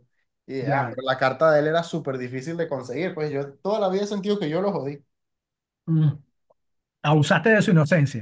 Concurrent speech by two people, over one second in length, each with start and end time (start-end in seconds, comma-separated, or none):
none